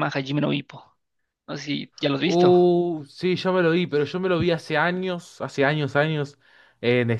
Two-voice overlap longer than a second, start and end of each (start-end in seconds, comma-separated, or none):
none